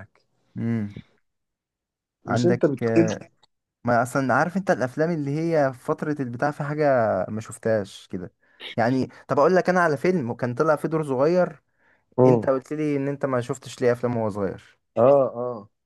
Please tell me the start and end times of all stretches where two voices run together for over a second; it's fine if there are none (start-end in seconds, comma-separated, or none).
none